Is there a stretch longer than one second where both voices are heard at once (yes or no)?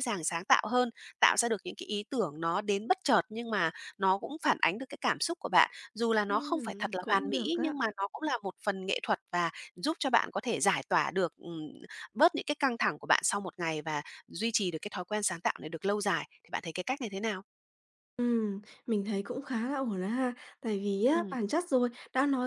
yes